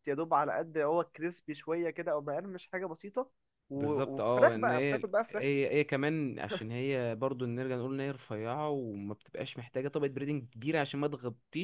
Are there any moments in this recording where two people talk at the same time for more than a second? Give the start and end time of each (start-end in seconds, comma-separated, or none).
3.8-5.4